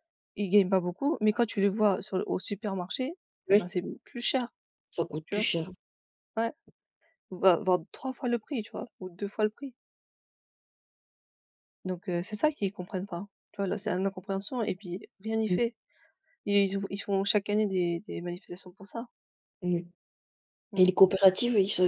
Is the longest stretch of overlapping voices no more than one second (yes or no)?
yes